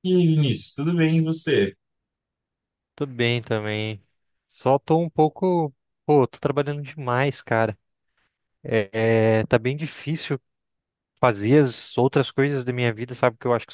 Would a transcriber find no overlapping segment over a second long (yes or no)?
yes